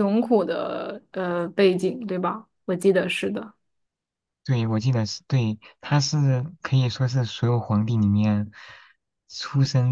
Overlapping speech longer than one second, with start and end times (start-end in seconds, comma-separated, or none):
none